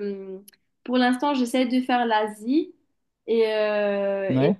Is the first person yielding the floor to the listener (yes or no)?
no